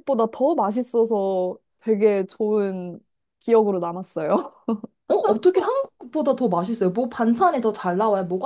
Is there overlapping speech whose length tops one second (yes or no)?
no